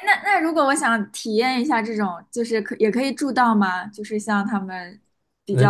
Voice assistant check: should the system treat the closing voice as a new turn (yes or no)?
yes